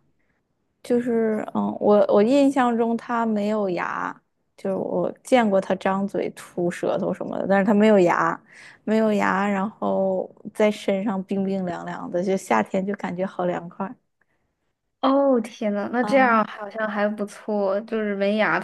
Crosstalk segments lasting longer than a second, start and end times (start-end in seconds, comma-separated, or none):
none